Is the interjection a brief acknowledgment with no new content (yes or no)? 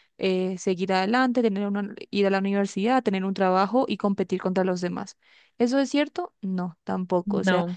yes